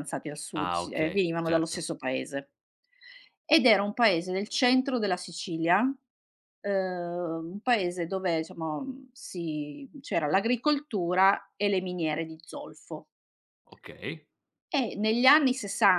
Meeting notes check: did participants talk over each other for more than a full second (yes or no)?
yes